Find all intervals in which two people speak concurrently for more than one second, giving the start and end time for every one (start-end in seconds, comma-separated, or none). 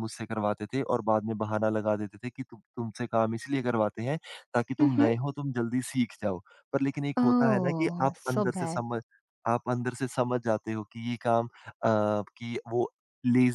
7.2-8.8